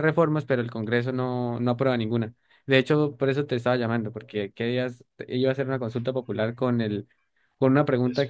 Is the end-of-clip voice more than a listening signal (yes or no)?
no